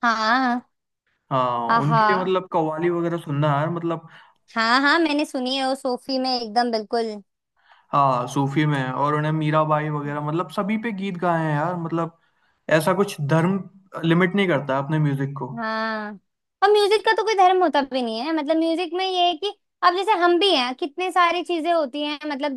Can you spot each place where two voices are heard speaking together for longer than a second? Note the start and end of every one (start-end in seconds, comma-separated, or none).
none